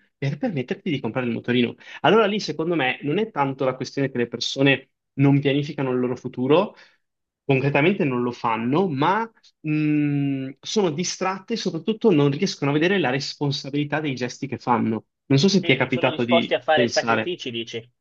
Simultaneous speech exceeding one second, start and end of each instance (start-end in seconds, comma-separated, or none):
15.6-17.3